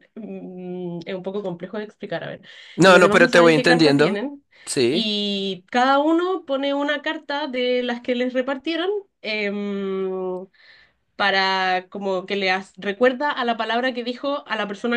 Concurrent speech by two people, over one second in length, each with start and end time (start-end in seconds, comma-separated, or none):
2.8-4.2